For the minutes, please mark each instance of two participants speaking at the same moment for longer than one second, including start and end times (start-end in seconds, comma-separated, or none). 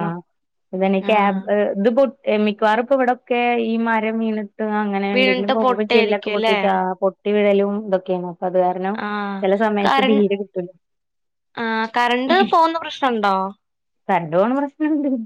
5.1-6.6